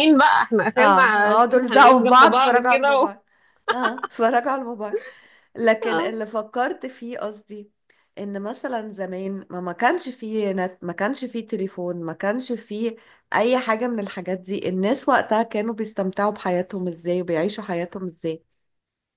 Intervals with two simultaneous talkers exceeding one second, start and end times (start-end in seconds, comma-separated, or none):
0.8-3.1